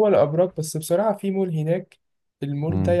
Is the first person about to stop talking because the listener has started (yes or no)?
no